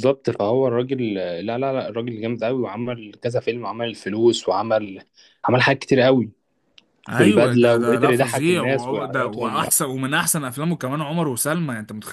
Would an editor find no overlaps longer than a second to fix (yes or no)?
no